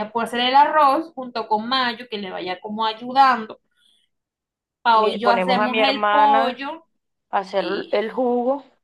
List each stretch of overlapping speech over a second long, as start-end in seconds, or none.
5.0-6.6